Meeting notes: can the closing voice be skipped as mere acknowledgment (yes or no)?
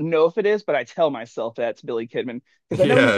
no